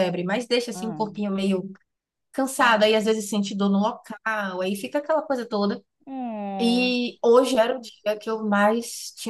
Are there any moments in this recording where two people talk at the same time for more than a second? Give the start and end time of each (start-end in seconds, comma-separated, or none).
none